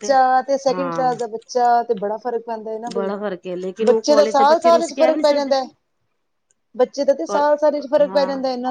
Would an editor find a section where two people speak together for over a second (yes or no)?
yes